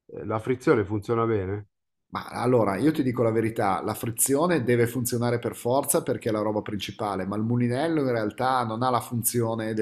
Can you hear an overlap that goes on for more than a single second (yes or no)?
no